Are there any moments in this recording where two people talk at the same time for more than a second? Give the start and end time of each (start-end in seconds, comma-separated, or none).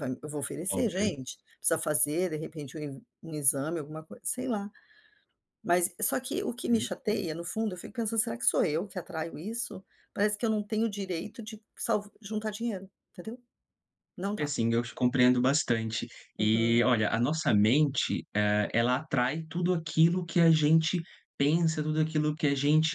none